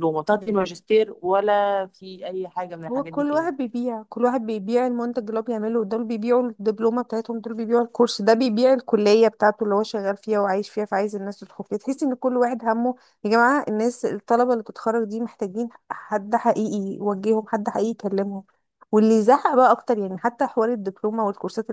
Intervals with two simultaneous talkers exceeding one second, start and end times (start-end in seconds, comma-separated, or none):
none